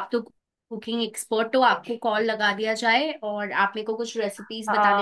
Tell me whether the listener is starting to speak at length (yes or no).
yes